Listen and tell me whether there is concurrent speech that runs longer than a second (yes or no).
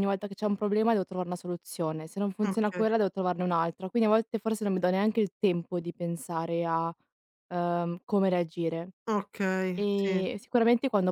no